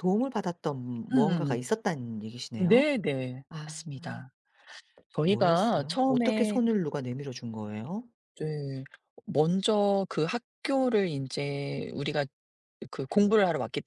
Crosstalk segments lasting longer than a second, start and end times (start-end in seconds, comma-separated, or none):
5.2-6.6